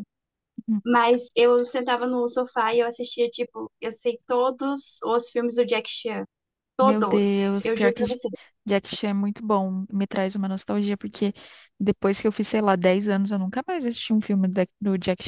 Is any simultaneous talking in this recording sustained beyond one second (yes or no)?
yes